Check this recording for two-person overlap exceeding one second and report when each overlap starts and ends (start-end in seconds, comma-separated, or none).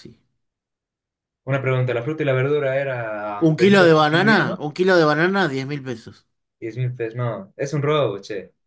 3.4-4.6